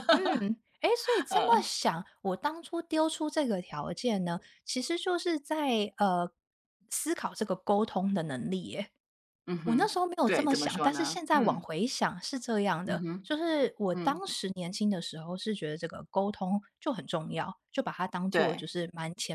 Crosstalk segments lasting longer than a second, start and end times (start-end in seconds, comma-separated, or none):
9.6-11.6